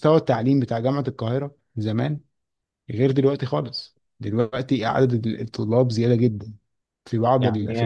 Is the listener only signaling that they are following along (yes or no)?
no